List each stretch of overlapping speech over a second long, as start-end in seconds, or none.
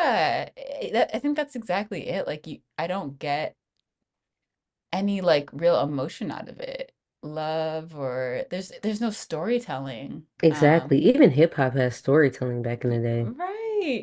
none